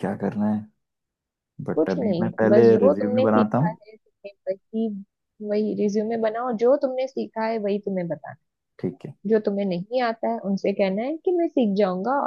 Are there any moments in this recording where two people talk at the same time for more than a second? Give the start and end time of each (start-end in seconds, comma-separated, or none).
1.8-3.8